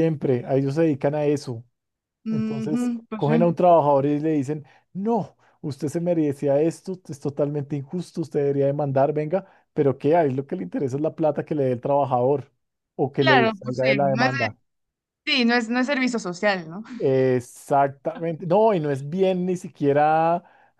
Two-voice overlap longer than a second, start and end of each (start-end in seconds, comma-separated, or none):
2.3-3.6, 13.2-14.6